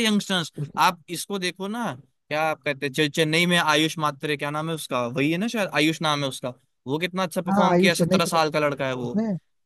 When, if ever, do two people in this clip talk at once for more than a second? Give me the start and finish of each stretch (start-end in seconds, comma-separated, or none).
7.5-9.1